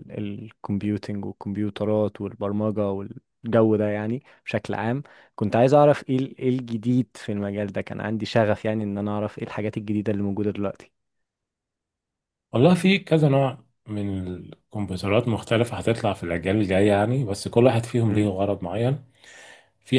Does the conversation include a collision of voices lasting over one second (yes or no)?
no